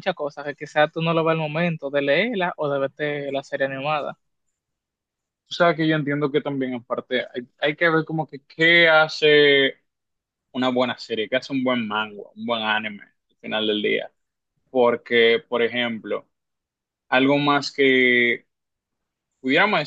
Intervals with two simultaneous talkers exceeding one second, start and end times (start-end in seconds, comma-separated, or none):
none